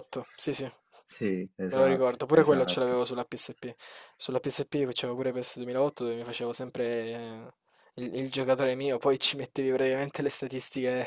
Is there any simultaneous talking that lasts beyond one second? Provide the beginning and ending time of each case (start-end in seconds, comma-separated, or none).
1.8-3.0